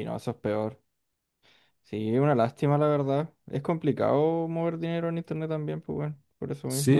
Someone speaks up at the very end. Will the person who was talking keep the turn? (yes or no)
no